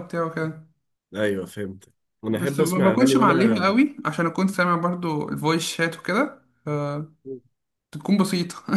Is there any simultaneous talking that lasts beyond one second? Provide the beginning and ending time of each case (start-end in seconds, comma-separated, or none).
2.3-3.7